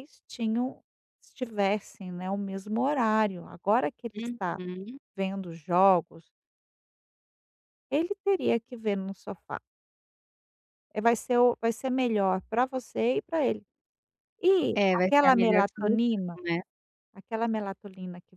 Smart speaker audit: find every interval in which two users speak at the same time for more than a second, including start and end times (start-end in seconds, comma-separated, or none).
14.7-16.4